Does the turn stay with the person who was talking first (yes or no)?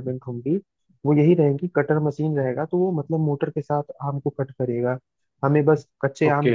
yes